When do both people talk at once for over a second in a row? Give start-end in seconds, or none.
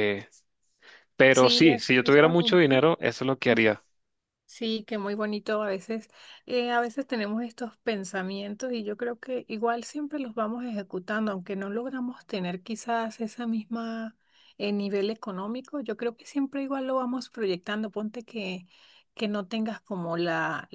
1.3-2.8